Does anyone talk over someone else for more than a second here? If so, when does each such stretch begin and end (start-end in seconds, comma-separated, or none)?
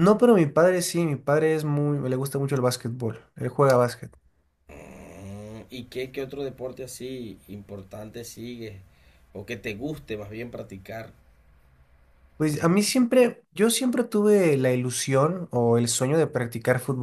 none